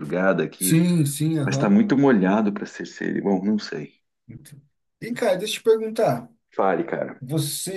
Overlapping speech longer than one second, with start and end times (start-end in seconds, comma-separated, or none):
none